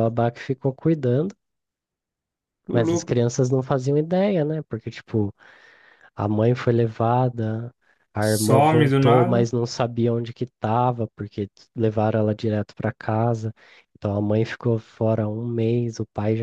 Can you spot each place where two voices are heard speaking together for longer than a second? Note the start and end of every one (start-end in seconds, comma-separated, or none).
8.2-9.5